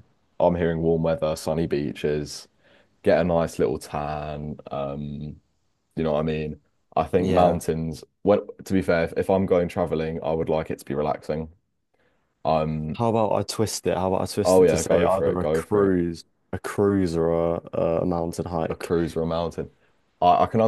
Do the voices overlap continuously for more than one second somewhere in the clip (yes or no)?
yes